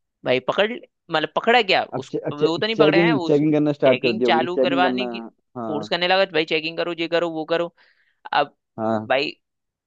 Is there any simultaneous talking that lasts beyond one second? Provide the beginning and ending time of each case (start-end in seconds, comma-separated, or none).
1.9-5.0